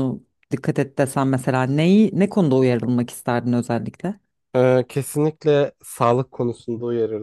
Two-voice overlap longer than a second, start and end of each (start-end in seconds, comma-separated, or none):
none